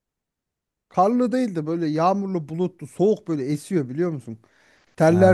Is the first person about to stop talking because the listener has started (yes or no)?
no